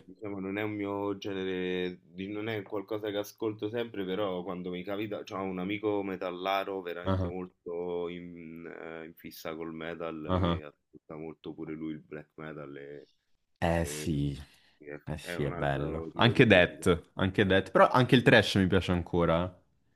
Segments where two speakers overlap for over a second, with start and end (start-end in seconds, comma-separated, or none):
15.1-16.8